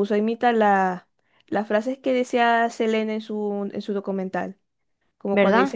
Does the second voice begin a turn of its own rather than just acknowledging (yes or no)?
no